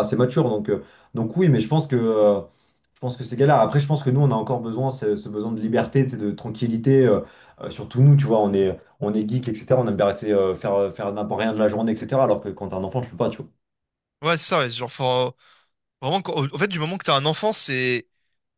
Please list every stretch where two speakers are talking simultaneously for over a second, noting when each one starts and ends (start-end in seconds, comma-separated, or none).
none